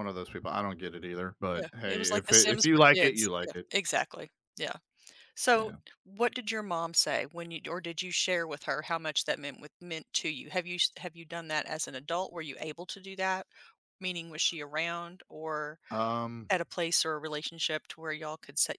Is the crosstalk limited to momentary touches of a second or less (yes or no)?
no